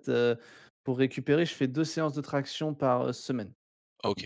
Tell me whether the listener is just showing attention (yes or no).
no